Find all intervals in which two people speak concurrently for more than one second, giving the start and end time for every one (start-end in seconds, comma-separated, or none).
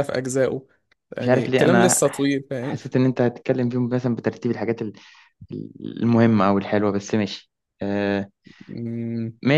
1.2-2.8